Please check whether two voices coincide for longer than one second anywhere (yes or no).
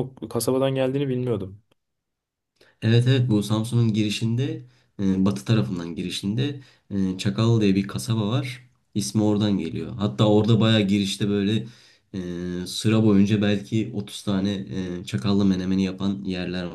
no